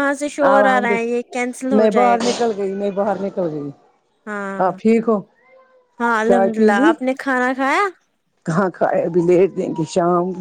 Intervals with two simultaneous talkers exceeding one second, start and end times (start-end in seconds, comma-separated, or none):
0.5-2.3